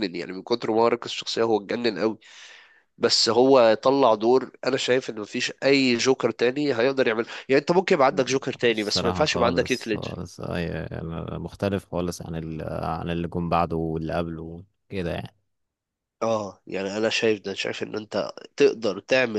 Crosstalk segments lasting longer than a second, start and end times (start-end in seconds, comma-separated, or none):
8.7-10.2